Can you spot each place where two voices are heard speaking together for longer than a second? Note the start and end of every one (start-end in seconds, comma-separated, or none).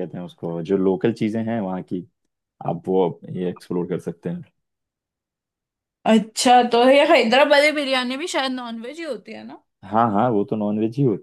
none